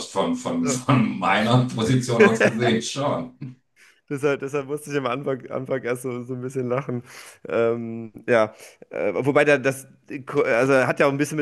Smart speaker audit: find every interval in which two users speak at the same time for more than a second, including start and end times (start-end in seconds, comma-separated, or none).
none